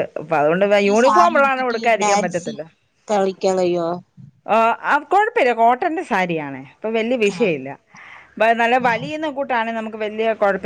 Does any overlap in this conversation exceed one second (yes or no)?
yes